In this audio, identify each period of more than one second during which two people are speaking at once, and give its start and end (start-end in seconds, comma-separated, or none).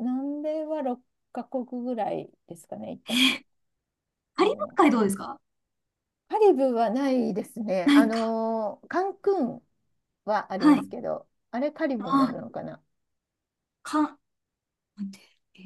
none